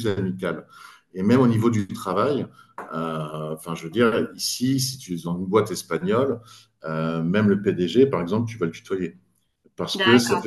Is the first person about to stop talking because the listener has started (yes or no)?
no